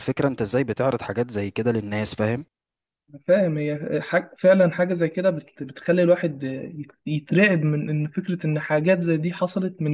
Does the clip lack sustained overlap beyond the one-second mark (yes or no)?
yes